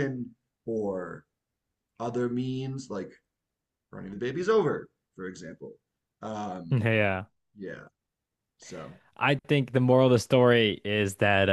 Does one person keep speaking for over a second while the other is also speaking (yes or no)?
no